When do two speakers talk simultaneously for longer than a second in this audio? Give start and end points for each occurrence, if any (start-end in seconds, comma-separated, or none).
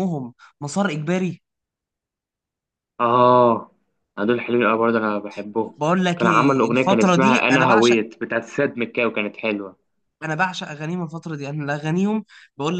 6.2-8.0